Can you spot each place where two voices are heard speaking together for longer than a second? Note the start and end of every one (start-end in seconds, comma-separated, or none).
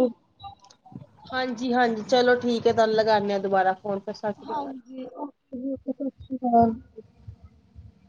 none